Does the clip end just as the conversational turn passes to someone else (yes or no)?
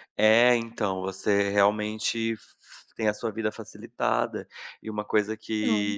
no